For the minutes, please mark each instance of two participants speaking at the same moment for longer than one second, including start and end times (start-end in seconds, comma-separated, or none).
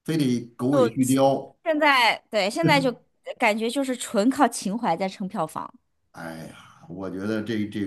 none